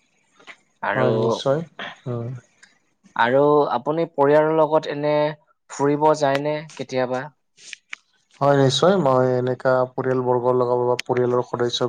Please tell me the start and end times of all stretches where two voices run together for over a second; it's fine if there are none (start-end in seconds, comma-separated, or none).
none